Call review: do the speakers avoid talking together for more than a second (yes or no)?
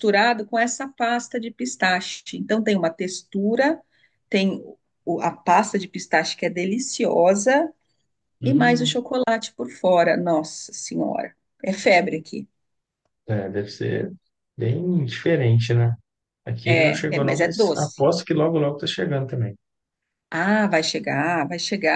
no